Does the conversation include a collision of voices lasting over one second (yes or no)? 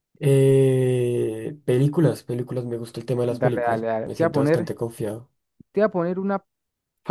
yes